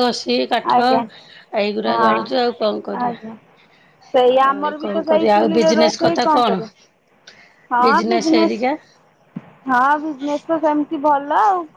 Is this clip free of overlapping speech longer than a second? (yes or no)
no